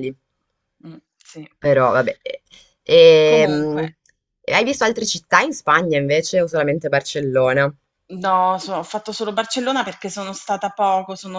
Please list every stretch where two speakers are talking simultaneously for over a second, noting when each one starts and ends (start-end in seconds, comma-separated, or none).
none